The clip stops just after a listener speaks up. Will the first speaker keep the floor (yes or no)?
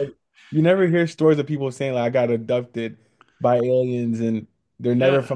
yes